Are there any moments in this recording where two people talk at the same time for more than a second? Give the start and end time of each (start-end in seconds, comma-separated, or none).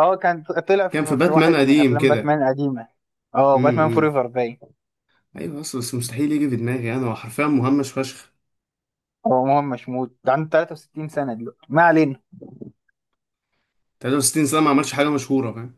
0.9-2.4